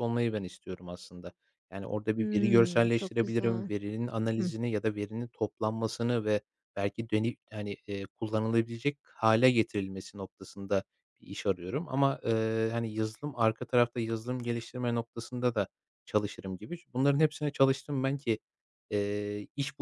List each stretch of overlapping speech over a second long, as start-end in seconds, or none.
2.1-3.7